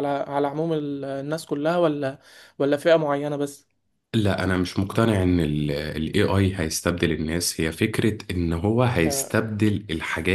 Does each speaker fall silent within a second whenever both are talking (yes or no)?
yes